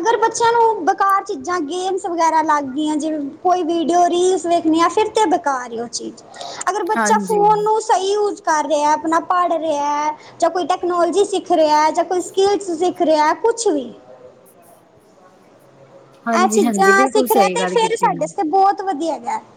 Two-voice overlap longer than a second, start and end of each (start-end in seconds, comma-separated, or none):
16.4-18.2